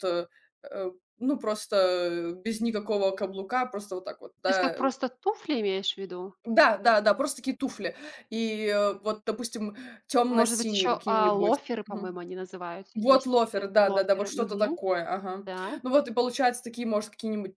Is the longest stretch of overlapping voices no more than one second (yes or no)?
no